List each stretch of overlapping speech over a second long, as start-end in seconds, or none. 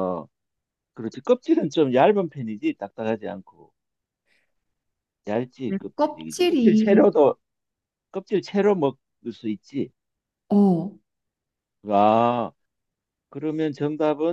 5.7-7.1